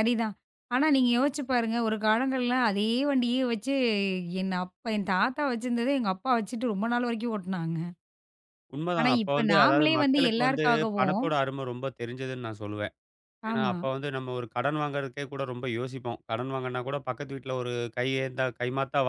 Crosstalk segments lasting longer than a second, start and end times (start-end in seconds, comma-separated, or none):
9.0-11.2